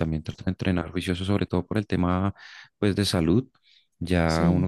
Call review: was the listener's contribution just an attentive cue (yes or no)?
yes